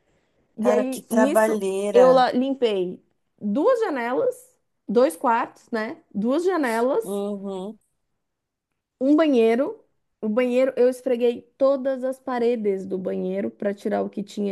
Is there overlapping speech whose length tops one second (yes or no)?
yes